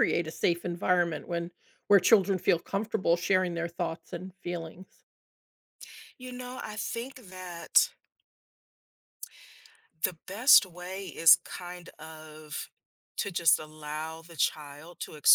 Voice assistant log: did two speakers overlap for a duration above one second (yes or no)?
no